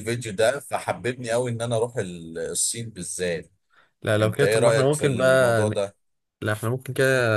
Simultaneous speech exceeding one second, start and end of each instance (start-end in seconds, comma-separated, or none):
4.2-5.7